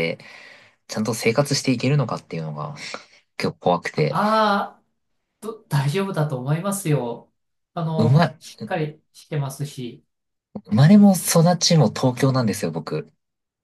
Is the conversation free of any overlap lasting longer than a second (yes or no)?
yes